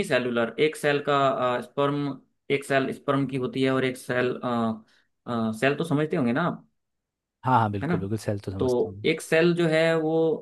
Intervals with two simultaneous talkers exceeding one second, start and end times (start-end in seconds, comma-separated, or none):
none